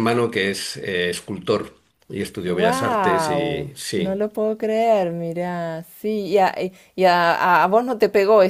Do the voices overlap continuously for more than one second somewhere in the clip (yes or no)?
yes